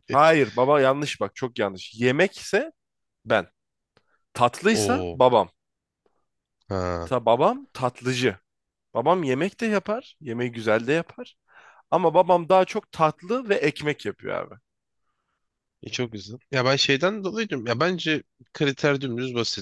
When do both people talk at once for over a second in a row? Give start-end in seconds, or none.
none